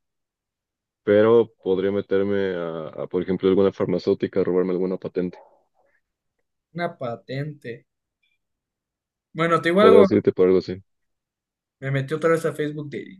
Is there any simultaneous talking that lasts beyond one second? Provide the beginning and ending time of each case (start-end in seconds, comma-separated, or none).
none